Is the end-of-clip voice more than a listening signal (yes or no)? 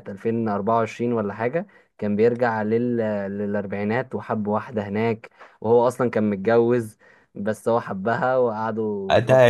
yes